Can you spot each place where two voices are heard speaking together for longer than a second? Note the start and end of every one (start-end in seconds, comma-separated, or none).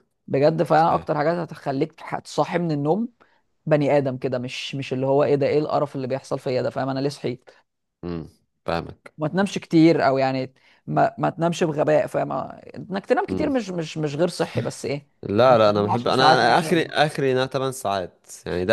15.5-16.9